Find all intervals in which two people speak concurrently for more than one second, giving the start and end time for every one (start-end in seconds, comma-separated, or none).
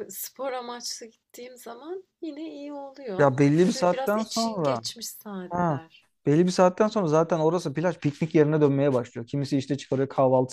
3.2-4.8